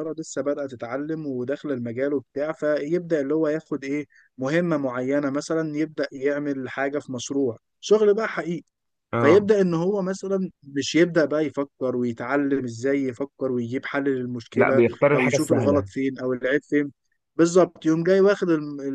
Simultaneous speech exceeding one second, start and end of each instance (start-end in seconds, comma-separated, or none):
14.5-15.9